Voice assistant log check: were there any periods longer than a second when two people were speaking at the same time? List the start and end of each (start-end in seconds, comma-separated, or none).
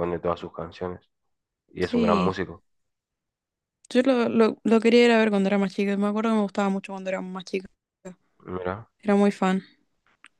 none